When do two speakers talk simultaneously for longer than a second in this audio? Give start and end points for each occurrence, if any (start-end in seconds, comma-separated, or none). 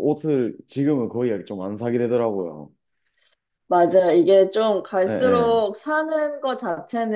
none